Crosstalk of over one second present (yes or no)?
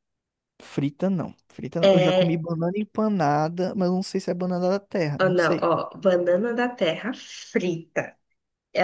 no